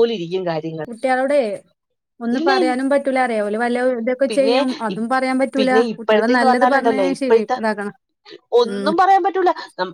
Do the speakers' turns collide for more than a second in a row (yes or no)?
yes